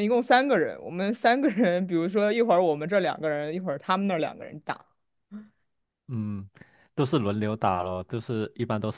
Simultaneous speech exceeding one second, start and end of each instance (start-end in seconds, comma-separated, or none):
none